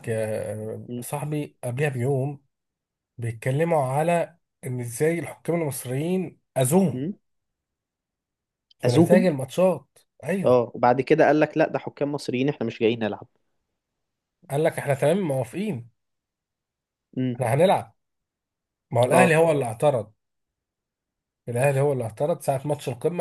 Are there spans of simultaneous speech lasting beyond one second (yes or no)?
no